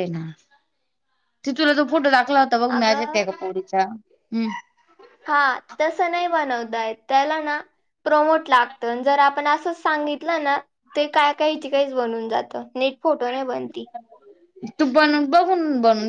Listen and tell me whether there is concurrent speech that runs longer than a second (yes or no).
no